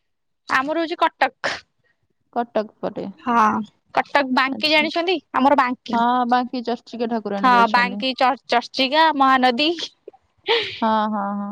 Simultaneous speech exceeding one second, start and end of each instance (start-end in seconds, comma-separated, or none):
none